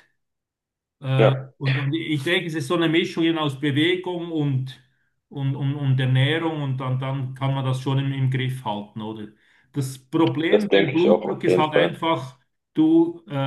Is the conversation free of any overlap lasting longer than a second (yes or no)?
no